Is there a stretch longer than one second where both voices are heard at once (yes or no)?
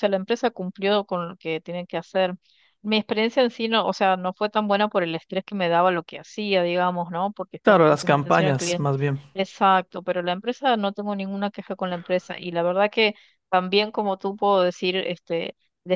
yes